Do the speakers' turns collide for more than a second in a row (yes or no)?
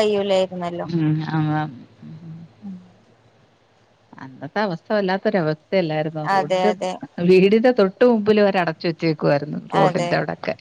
no